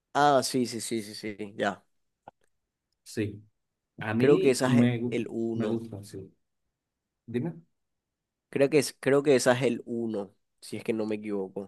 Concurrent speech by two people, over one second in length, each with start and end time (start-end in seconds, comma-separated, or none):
4.2-5.8